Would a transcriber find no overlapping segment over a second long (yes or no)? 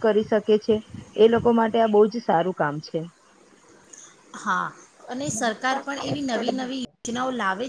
no